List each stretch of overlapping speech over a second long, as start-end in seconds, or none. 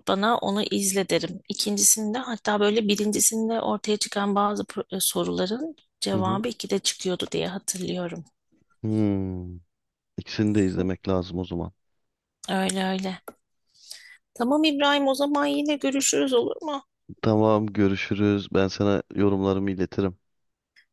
none